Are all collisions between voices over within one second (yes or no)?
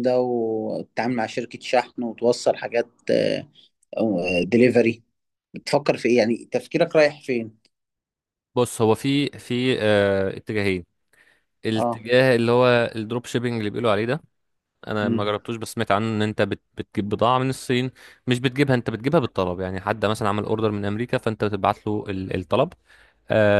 yes